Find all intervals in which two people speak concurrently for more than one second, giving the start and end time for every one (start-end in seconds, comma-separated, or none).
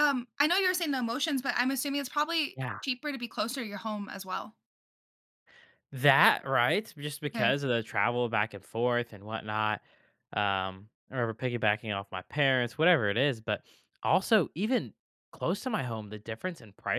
none